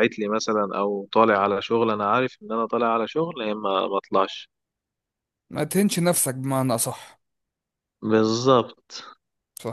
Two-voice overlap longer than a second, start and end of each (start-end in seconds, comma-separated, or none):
none